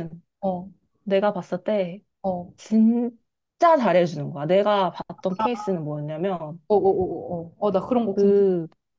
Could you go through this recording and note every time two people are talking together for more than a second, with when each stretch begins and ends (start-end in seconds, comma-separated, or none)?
none